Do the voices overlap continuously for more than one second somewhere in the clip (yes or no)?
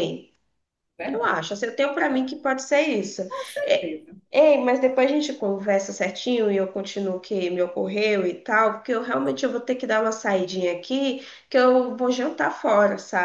no